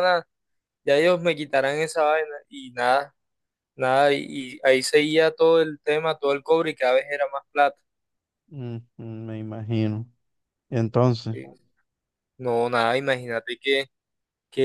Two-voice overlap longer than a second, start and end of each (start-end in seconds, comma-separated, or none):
none